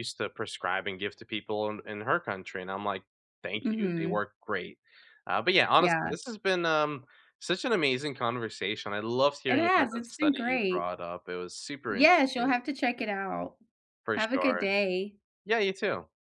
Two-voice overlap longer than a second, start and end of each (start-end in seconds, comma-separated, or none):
9.5-10.9